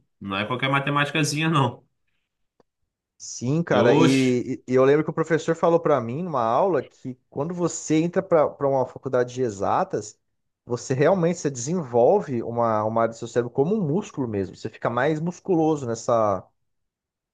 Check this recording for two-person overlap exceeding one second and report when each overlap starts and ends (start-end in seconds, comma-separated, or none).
none